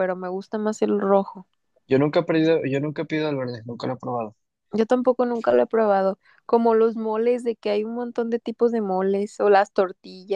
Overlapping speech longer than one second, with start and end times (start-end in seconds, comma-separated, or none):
none